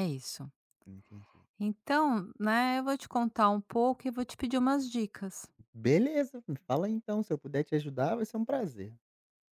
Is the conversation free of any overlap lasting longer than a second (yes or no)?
yes